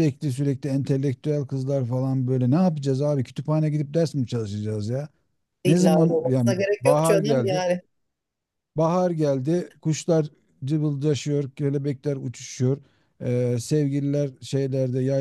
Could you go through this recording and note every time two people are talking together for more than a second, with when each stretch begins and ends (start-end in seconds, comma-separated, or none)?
5.7-7.6